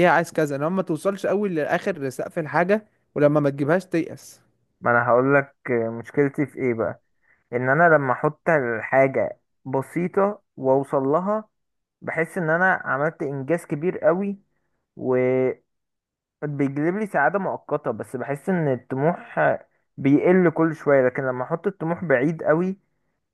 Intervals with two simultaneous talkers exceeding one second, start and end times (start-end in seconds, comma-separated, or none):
none